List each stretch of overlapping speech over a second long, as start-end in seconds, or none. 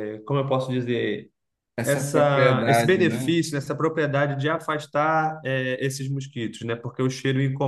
1.8-3.4